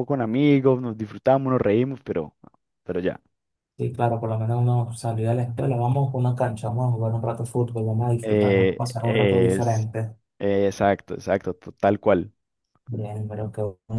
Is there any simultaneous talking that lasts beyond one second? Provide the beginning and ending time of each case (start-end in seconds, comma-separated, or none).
8.2-9.9